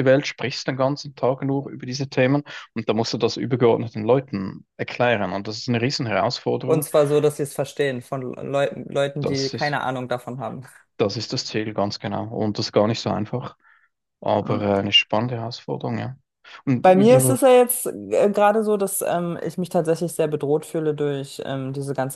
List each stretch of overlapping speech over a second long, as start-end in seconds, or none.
none